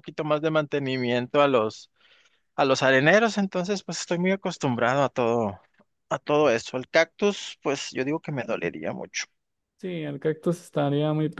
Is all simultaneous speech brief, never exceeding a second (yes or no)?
yes